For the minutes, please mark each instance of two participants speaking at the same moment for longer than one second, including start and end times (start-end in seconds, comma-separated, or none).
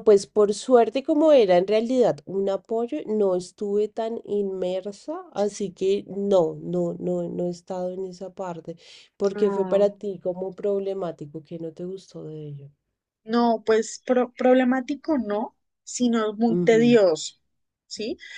none